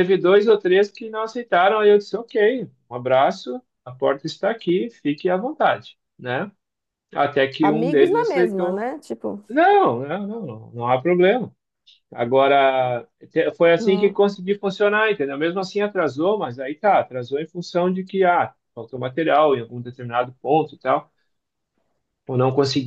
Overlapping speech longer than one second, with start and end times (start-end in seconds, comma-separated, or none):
7.6-8.8